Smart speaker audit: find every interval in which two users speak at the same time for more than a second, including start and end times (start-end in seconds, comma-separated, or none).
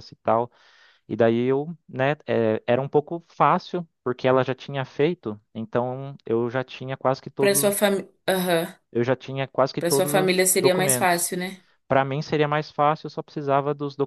9.8-11.3